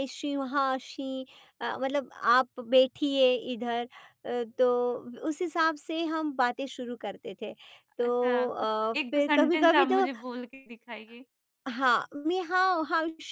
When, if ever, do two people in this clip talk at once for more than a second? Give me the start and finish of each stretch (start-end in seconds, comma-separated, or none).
8.1-10.1